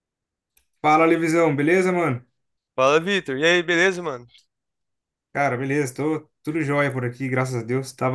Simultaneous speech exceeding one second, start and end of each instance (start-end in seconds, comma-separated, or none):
none